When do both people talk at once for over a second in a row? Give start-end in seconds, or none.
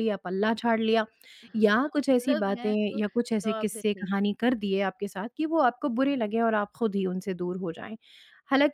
1.8-4.1